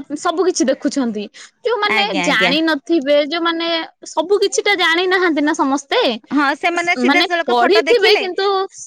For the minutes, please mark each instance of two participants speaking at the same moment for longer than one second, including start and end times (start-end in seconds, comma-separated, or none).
6.4-8.2